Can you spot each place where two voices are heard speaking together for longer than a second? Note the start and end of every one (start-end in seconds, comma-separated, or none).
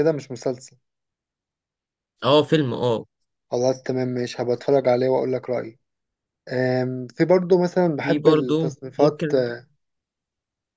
8.0-9.3